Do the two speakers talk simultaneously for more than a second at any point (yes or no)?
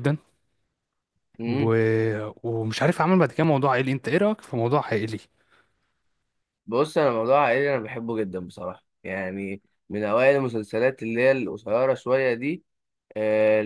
no